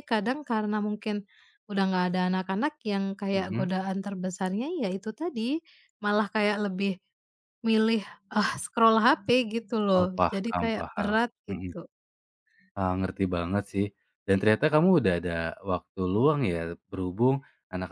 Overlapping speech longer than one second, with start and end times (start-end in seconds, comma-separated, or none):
9.9-11.7